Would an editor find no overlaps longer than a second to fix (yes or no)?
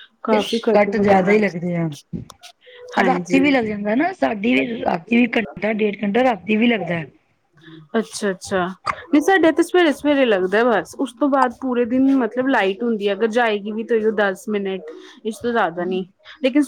yes